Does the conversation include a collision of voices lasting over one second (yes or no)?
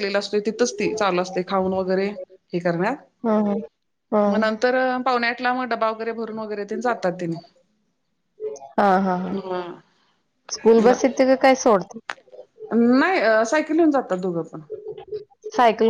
no